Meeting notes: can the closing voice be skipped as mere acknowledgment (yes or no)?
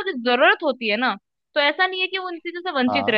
yes